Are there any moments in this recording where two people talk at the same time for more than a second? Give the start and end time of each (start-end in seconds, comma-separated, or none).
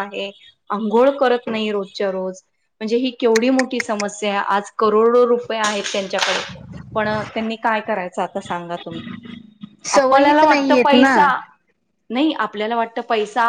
10.0-11.3